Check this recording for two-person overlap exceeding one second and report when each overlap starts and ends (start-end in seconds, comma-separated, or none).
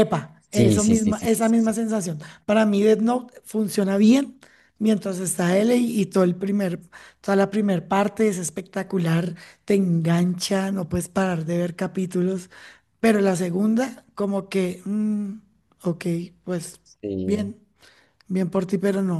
0.5-1.8